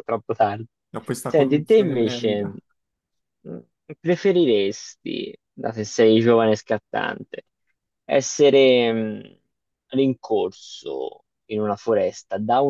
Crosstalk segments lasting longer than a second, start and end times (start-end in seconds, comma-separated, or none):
1.3-2.5